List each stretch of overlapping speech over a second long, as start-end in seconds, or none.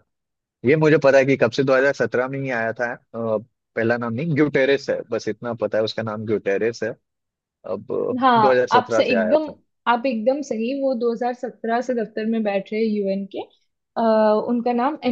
8.2-9.4